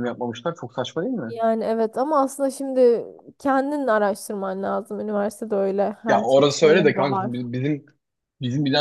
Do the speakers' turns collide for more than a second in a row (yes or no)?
yes